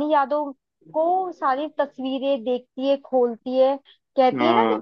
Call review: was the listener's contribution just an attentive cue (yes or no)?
yes